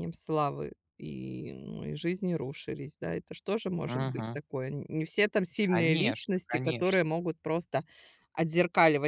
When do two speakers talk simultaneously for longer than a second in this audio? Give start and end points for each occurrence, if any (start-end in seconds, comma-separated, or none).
5.6-7.0